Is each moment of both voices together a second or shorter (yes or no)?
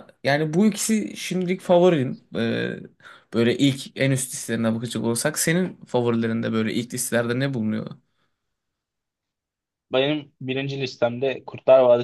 yes